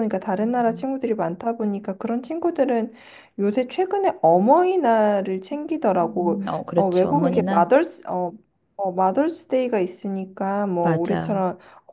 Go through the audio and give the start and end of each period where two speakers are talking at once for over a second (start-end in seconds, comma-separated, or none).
6.0-7.7